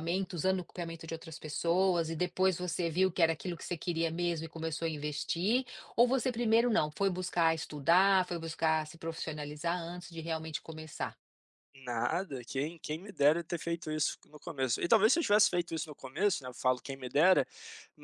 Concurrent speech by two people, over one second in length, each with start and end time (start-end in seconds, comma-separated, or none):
none